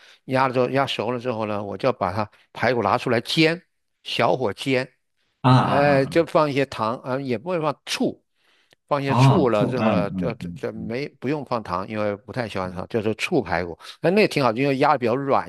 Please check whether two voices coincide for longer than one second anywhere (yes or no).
yes